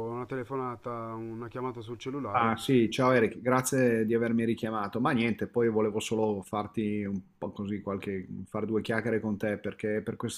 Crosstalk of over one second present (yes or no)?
no